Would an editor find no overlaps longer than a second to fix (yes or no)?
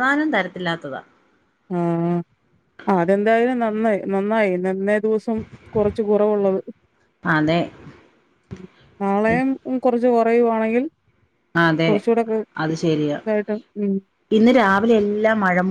yes